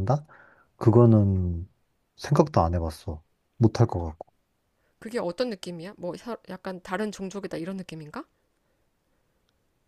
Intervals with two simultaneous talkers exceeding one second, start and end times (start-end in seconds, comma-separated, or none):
none